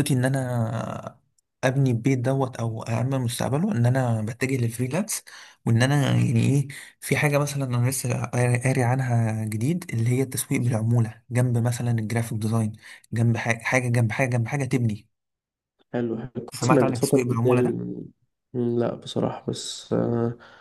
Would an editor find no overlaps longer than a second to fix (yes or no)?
no